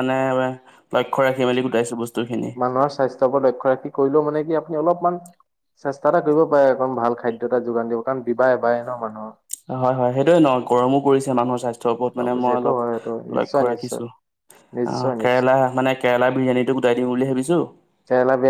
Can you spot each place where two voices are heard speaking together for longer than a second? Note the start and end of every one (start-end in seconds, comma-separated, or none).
12.2-14.0